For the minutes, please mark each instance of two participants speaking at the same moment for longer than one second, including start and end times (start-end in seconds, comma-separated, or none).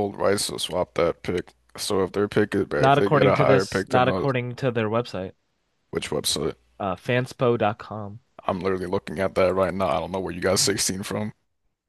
2.8-4.3